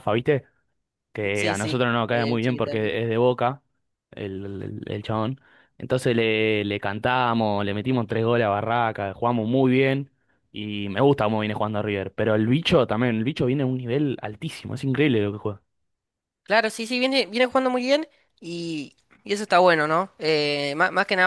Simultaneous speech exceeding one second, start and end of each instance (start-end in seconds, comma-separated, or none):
1.3-2.7